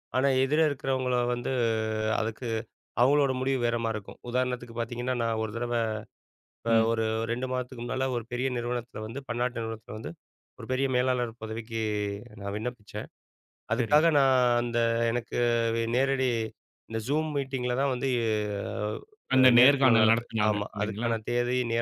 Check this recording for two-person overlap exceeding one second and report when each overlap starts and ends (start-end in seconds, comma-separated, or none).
19.4-21.1